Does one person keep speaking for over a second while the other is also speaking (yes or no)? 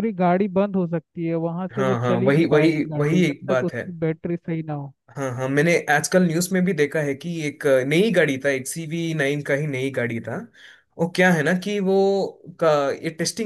yes